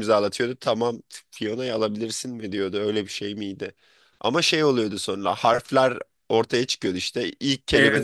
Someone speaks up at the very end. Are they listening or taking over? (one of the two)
listening